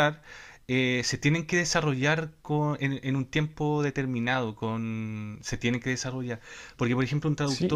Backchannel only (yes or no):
no